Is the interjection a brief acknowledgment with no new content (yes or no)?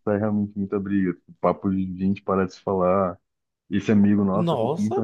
yes